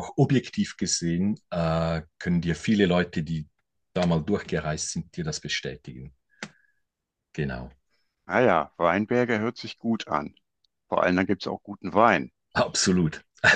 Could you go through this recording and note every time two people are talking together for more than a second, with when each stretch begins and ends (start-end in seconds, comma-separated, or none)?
none